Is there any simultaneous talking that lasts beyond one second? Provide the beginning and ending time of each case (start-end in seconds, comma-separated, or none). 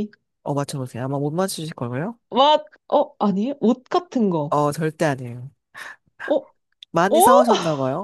none